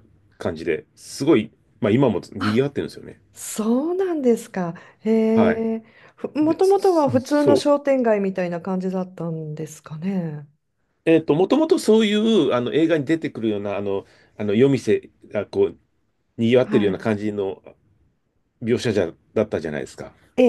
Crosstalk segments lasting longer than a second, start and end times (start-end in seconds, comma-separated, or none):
6.4-7.7